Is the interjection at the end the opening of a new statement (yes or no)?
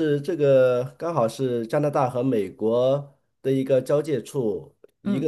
no